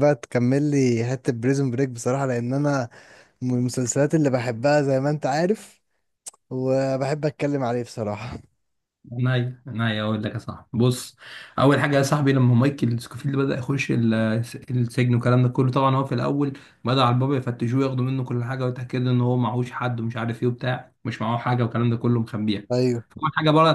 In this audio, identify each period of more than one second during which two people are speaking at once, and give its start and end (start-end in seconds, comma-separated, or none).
none